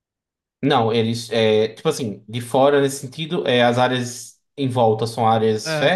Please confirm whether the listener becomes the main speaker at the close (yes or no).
no